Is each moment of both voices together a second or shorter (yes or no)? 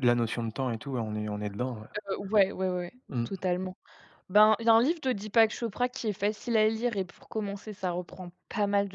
yes